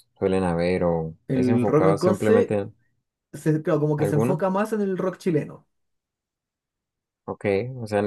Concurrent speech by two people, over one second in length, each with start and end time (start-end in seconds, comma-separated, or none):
1.3-2.6